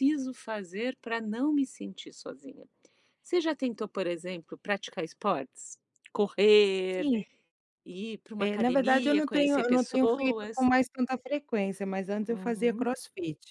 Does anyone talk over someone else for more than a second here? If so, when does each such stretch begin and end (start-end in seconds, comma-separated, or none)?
8.4-10.7